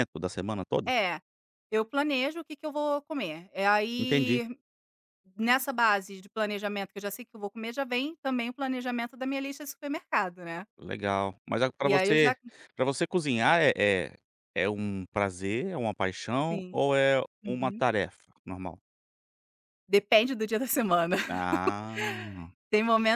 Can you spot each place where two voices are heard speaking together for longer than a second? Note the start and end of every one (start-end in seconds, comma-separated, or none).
none